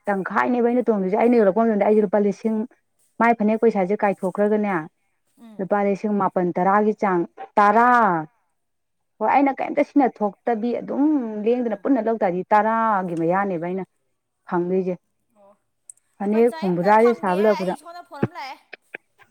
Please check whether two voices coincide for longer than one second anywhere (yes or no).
yes